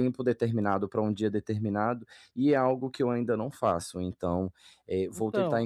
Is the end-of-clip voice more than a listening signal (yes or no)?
no